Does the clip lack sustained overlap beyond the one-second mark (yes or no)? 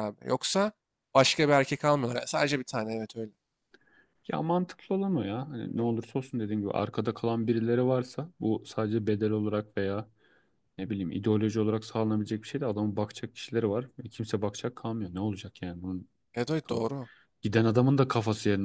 yes